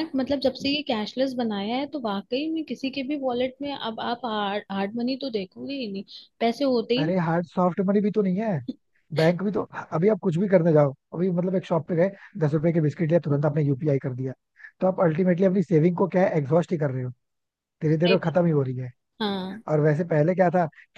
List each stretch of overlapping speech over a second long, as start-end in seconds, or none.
none